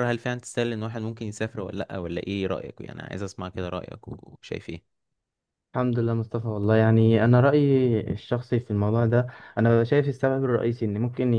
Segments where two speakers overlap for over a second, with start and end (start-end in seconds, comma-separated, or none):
none